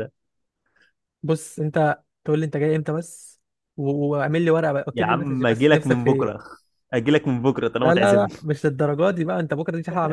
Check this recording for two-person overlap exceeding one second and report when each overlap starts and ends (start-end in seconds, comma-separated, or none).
4.9-6.4